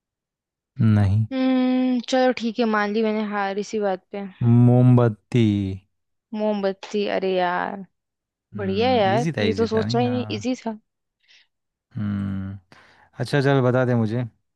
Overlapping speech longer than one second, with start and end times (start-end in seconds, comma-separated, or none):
8.6-10.6